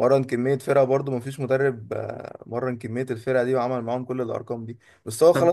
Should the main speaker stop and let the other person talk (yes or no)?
no